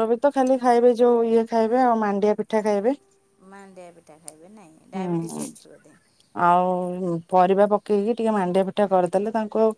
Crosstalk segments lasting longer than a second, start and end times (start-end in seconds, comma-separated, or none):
none